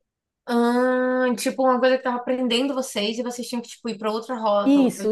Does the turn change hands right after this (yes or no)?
yes